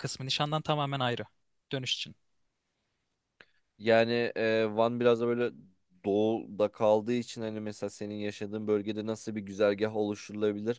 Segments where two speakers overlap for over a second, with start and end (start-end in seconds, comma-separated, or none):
none